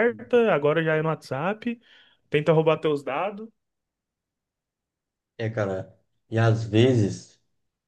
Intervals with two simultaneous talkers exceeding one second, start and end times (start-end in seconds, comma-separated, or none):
none